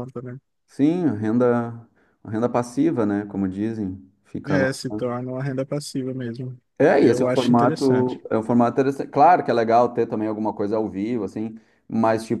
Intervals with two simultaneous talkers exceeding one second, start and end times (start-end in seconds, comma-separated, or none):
7.0-8.2